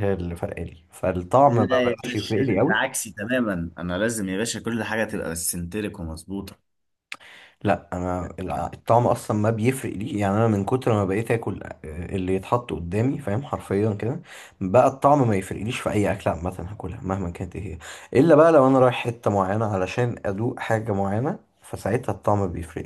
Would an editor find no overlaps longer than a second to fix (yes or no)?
no